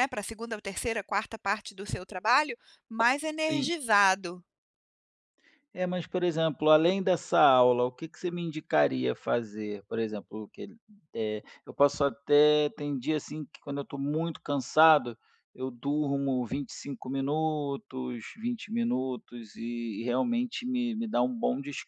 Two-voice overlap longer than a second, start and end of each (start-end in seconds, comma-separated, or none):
none